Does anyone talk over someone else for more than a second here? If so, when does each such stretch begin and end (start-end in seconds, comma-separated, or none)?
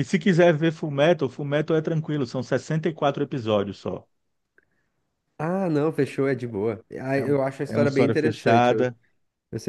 7.2-8.9